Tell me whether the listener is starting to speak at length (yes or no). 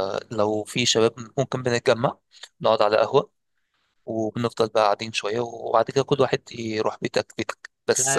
yes